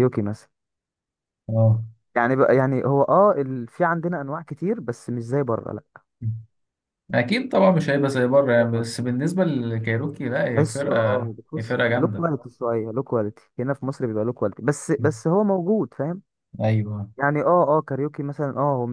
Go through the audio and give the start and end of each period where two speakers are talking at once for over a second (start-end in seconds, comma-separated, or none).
10.5-12.3